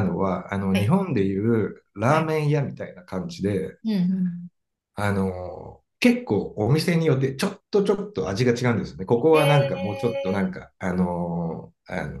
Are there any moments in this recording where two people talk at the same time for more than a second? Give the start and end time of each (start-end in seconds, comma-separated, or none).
9.3-10.5